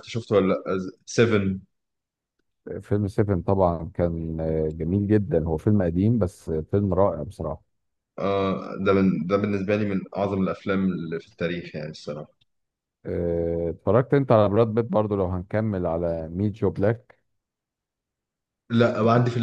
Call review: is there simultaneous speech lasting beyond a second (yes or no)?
no